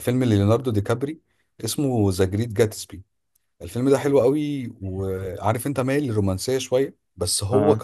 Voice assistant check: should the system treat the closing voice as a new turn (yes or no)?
no